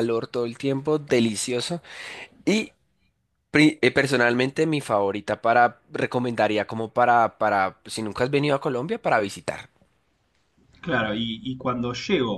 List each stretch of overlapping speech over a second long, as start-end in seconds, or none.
none